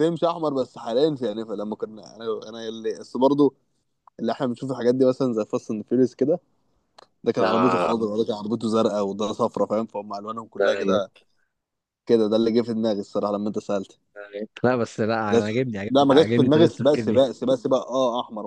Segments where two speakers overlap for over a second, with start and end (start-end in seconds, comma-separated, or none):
15.3-17.2